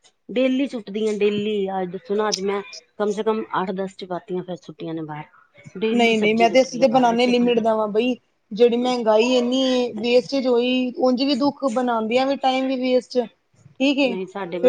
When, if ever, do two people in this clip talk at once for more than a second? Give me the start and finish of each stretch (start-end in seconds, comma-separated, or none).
5.9-7.6